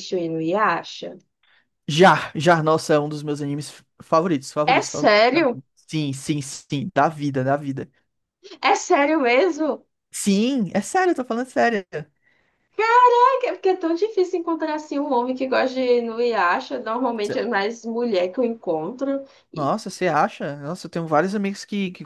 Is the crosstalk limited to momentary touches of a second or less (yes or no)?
yes